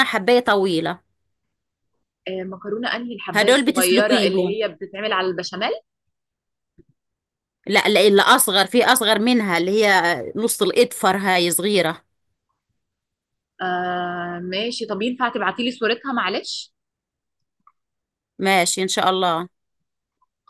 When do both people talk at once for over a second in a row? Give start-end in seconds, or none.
3.3-4.6